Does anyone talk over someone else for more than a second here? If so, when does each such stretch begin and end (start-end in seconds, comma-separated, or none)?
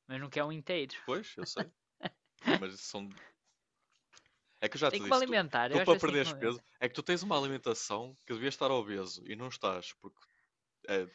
4.9-6.6